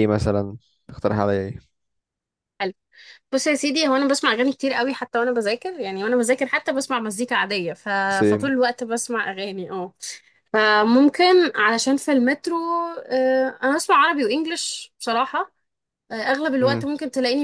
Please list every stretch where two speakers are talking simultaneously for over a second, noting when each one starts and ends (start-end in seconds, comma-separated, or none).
none